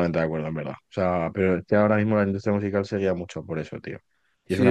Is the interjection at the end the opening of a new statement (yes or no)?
yes